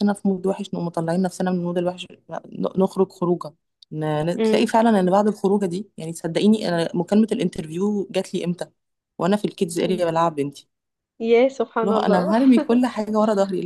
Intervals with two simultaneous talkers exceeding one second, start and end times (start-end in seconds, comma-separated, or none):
none